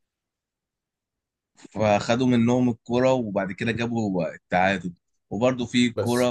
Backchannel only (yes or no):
yes